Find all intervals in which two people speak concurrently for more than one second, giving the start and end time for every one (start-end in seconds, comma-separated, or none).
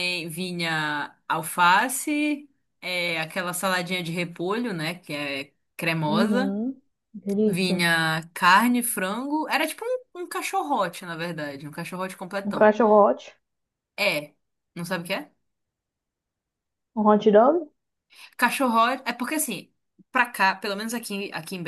none